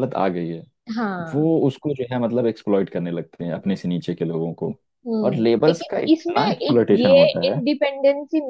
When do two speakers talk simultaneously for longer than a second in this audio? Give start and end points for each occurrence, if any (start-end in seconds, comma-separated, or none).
5.2-7.4